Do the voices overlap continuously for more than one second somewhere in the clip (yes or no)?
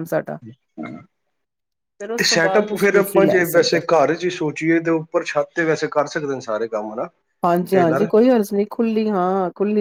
yes